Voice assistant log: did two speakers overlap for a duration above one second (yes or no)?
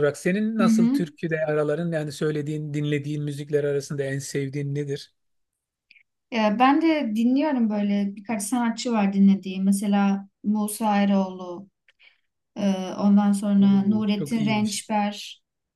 yes